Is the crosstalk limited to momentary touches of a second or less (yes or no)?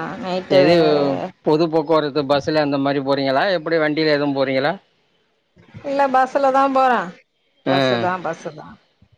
yes